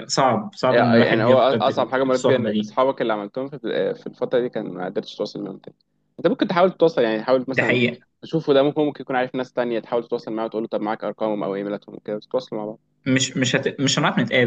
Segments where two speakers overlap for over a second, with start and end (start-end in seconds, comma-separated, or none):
0.7-2.7